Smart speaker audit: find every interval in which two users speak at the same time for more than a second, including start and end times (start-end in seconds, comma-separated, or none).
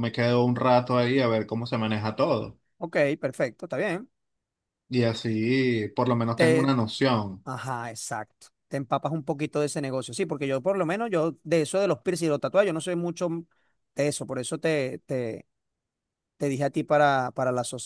none